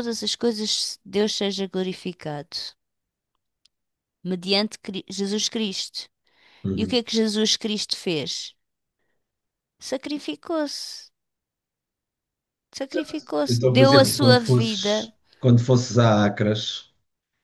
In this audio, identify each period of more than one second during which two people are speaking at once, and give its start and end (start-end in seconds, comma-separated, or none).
13.5-15.1